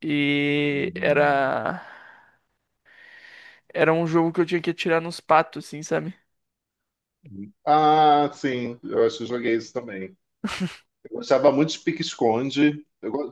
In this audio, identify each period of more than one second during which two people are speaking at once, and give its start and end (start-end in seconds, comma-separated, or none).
none